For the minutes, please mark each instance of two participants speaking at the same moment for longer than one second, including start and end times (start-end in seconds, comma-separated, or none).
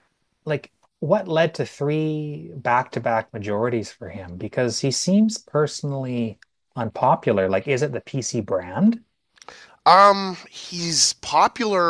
none